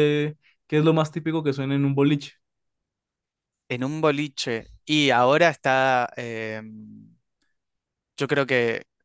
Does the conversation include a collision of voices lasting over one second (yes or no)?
no